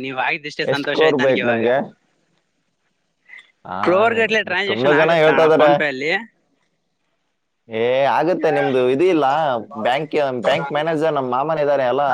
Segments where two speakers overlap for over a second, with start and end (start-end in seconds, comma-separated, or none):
3.8-5.7